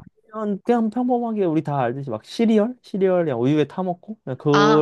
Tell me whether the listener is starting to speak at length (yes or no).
yes